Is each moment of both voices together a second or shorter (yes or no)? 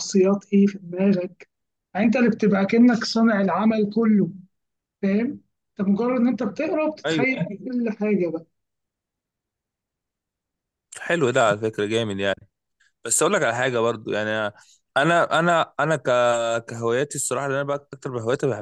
yes